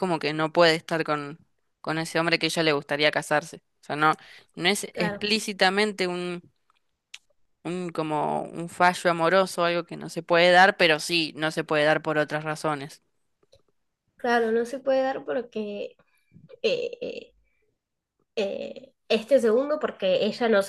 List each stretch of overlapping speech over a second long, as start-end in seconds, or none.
none